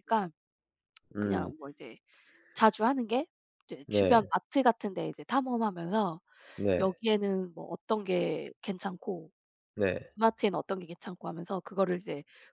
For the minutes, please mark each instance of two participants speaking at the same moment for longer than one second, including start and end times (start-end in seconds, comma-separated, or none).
none